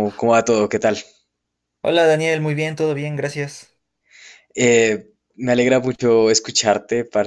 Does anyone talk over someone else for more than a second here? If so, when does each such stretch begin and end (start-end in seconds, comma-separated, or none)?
none